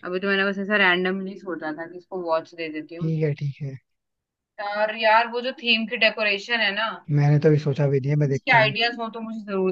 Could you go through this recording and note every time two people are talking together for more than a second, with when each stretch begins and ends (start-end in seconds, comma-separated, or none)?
none